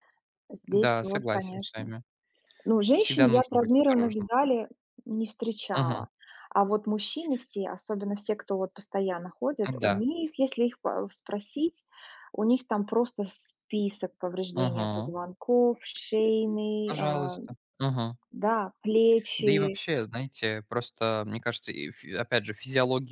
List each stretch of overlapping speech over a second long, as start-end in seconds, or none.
0.7-1.9, 3.0-4.3